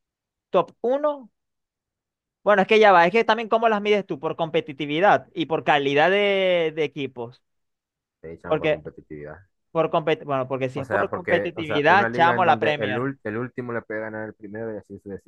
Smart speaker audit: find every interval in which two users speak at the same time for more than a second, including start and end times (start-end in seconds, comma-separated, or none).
10.7-13.1